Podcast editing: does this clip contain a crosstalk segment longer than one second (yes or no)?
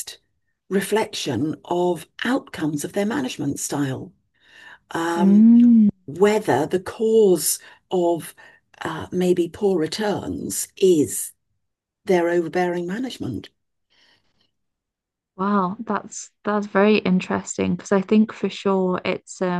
no